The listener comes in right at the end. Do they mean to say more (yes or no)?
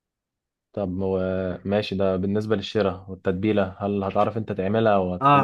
yes